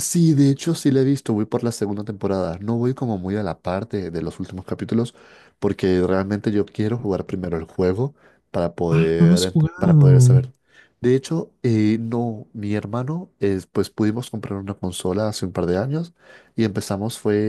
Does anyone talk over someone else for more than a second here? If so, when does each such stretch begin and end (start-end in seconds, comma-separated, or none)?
8.9-10.4